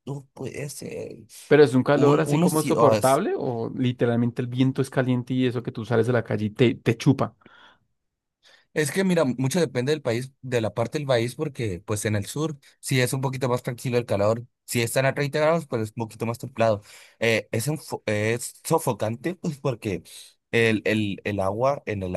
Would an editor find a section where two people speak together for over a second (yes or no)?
yes